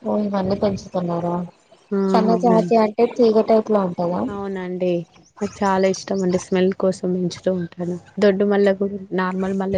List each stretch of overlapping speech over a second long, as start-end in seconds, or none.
none